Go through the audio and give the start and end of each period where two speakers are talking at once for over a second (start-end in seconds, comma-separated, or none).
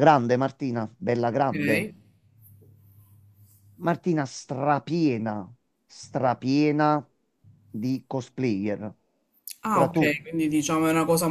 none